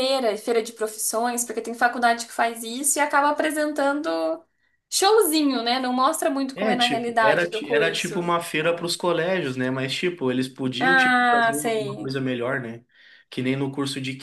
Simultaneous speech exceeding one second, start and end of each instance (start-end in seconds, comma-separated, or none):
6.5-8.3, 10.8-12.1